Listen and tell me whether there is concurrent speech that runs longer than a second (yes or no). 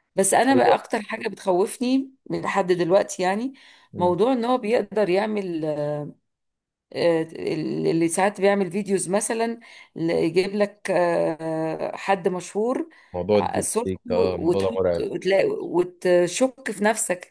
yes